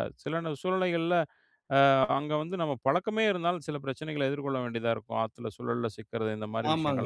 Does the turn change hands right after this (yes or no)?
yes